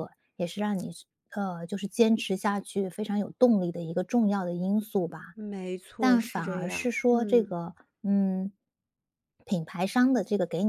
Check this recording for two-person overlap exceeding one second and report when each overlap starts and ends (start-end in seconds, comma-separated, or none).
6.0-7.5